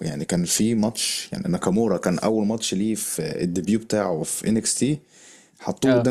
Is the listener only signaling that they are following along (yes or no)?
yes